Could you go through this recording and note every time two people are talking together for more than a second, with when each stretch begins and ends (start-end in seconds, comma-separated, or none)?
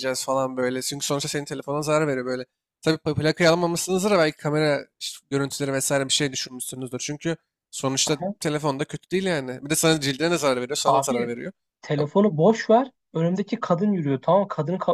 none